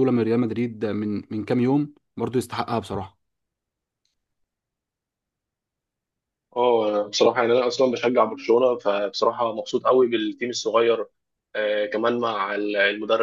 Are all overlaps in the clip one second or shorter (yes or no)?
yes